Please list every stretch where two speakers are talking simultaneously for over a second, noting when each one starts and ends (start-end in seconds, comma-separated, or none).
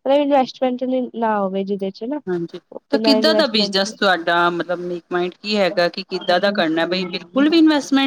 2.9-4.1